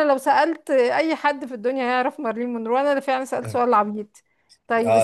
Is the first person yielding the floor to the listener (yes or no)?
yes